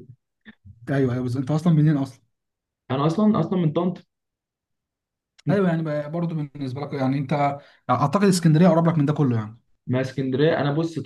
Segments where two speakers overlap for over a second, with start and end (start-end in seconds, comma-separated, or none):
none